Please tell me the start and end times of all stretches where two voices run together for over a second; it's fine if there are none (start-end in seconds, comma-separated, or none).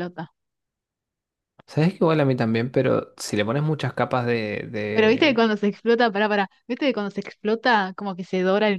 none